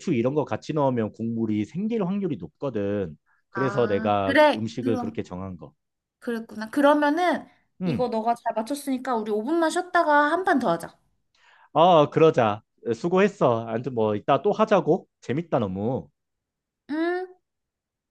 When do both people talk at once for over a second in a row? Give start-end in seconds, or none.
3.5-5.2